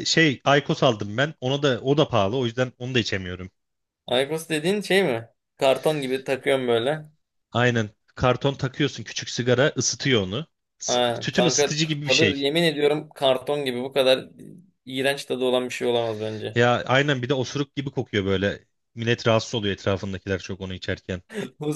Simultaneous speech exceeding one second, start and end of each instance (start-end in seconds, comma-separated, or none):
10.9-12.5